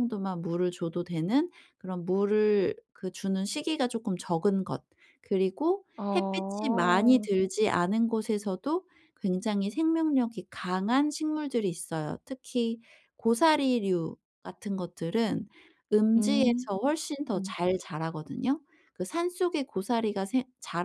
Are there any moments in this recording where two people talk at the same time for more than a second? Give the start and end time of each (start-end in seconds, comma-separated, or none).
6.0-7.3